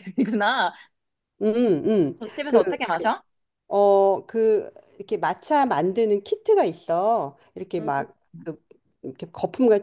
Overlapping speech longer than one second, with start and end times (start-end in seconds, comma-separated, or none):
none